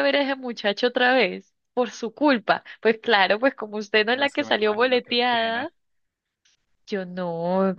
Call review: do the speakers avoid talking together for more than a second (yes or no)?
no